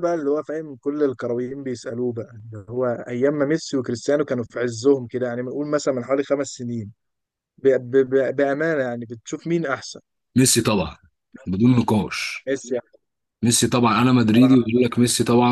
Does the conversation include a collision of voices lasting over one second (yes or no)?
no